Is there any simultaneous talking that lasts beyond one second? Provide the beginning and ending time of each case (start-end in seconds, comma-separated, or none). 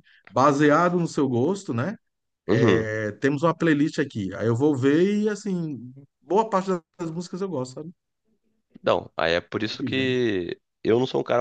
none